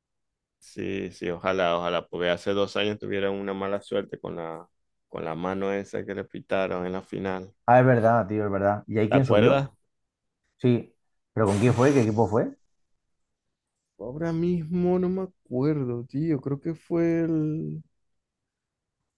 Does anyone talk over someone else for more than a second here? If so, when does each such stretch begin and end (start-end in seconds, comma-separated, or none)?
none